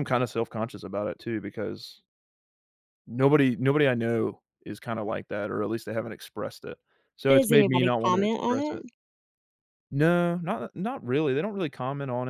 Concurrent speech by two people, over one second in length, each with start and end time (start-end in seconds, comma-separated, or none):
7.3-8.8